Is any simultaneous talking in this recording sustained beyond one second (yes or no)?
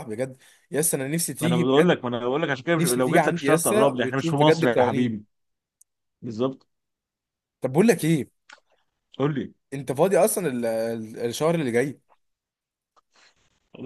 yes